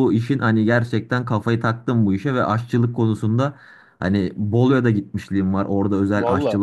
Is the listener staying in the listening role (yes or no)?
yes